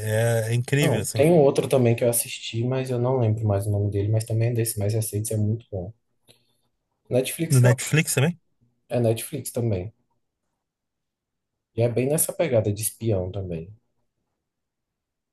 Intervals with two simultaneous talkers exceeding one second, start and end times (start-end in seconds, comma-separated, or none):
none